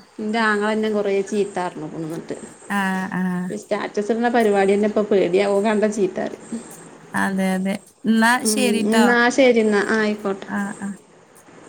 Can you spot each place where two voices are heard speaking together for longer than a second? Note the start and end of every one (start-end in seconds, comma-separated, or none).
none